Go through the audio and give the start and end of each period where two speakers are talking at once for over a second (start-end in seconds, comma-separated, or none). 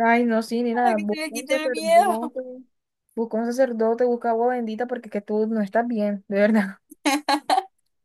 0.7-2.4